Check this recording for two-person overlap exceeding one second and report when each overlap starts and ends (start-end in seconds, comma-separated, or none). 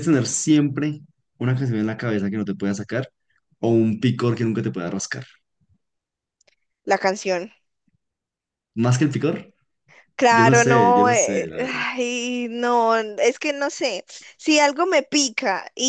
10.3-11.8